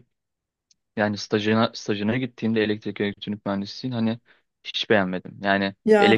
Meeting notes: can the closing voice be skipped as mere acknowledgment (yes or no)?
yes